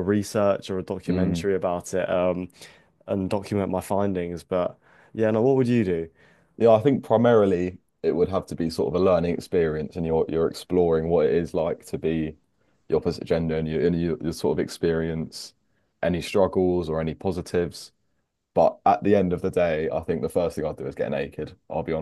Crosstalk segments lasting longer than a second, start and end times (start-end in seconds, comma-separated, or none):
none